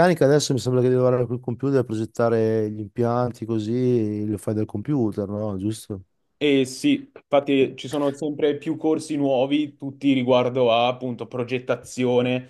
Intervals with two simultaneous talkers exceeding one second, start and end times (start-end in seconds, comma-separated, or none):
none